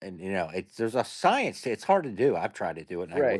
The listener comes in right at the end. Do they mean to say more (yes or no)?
yes